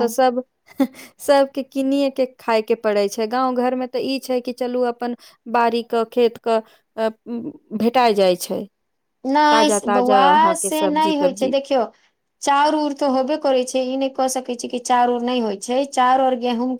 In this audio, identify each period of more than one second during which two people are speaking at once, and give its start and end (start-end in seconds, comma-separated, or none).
9.5-11.5